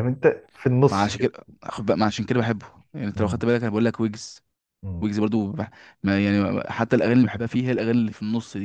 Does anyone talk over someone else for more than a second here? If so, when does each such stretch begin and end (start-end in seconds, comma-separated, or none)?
none